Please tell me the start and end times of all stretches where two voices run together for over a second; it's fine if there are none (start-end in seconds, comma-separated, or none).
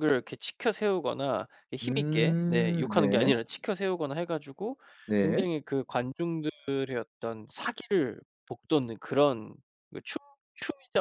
1.8-3.3